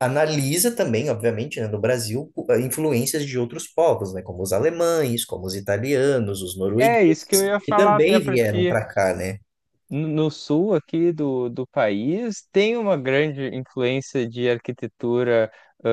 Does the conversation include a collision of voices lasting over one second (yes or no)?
yes